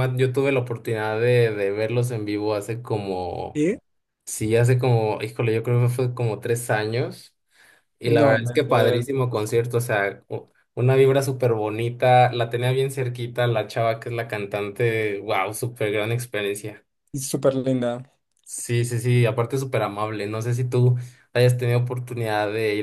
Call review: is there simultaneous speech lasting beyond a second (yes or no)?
no